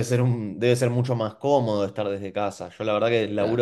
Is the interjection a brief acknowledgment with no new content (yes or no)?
yes